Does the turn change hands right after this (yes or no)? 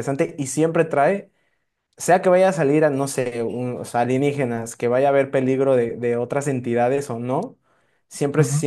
no